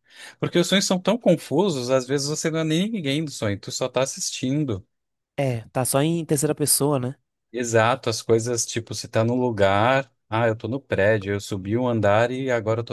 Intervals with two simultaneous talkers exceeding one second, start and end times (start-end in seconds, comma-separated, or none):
none